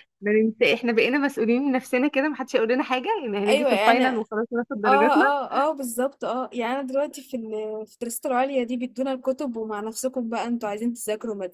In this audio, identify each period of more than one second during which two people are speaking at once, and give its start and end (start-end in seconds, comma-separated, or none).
none